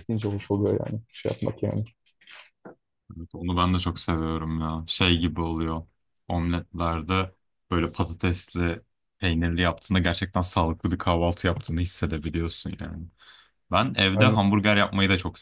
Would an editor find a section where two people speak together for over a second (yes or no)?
no